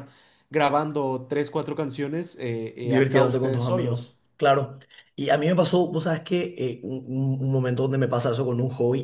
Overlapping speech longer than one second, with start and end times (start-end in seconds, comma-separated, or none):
2.8-4.2